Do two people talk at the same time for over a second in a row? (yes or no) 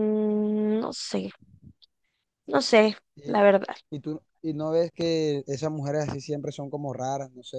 no